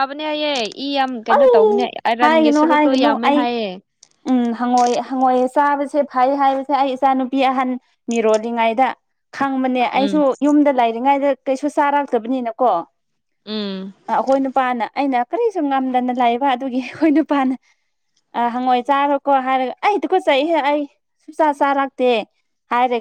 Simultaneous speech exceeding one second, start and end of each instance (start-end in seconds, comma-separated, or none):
1.3-3.4